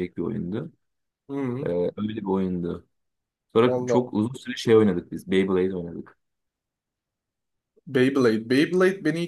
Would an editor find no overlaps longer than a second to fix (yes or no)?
yes